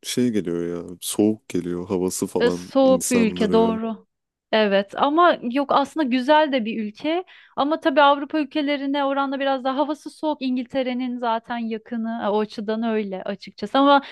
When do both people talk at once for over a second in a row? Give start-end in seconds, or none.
2.4-3.8